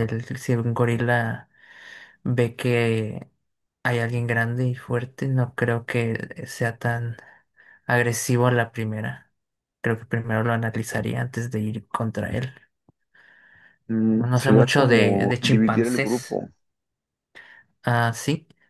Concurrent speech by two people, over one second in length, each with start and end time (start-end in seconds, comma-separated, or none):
14.2-16.4